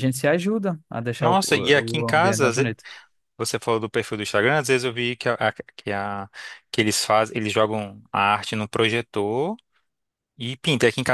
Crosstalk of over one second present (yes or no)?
yes